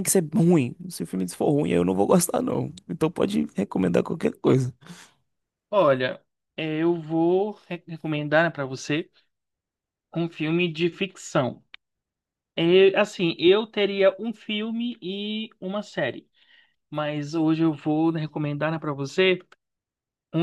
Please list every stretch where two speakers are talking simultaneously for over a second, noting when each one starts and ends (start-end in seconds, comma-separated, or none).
none